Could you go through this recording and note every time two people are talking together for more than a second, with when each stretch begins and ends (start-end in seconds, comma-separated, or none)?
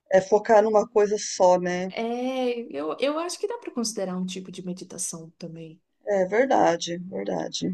none